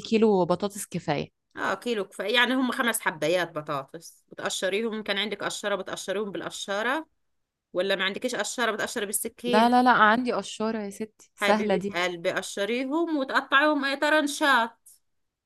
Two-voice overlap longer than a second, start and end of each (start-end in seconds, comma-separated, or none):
none